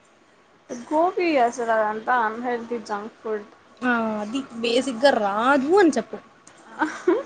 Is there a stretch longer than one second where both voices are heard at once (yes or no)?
no